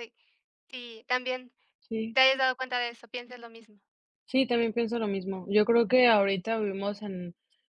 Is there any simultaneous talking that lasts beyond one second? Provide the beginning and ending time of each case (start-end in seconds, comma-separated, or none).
none